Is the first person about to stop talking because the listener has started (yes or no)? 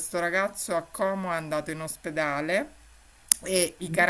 no